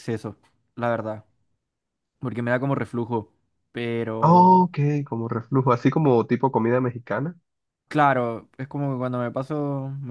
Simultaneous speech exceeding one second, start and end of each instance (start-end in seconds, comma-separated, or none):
none